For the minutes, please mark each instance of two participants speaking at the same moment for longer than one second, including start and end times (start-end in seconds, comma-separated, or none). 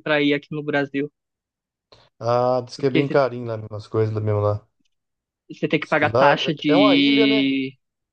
5.8-7.5